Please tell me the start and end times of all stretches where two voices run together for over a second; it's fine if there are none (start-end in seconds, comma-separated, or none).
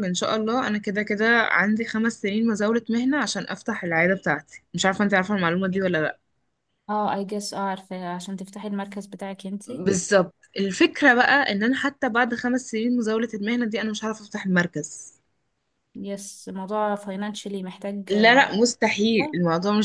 none